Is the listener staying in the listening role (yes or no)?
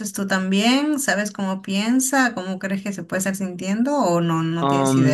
no